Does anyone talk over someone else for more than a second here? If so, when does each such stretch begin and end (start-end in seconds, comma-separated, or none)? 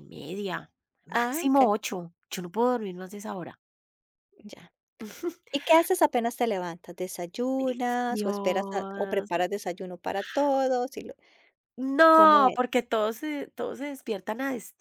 8.1-9.3